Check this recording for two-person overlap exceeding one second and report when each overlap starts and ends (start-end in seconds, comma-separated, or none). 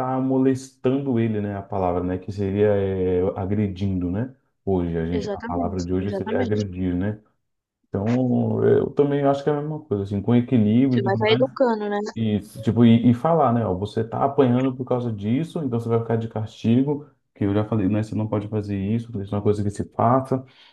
5.2-6.6